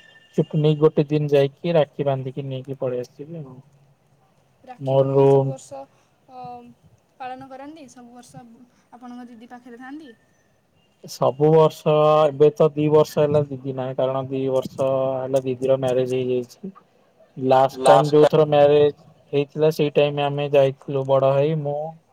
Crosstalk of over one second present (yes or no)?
no